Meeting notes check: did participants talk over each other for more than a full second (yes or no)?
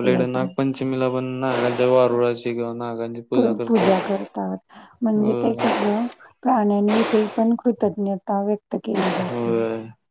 no